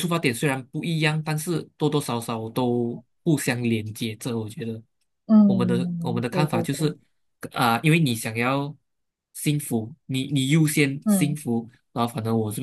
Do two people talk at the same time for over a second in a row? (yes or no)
yes